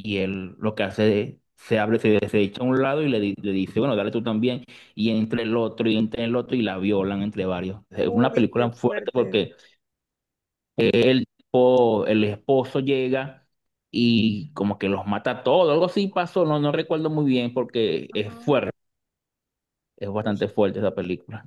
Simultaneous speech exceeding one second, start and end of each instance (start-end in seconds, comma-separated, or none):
8.0-9.4